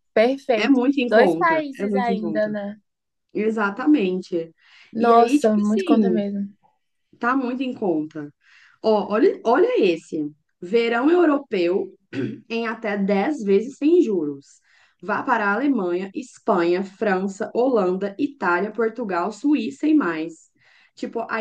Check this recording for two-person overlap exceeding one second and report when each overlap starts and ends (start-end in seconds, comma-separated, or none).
0.6-2.5, 5.0-6.2